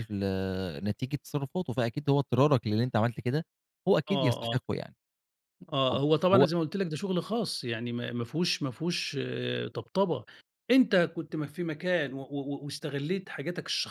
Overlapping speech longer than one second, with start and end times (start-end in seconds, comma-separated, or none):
none